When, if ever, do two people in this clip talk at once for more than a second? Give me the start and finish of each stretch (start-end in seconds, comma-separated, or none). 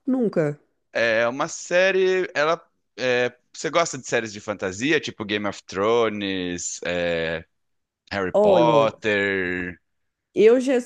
none